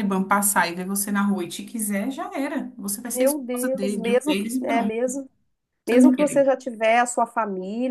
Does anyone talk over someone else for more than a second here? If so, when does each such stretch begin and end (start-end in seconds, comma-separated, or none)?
3.1-5.0